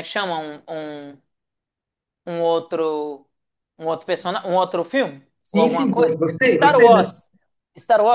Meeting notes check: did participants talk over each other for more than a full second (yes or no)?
yes